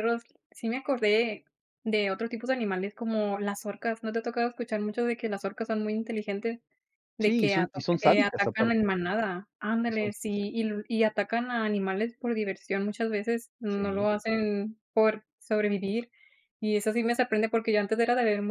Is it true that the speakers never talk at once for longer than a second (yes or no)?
no